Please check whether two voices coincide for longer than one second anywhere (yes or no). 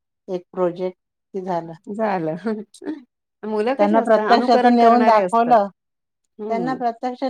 yes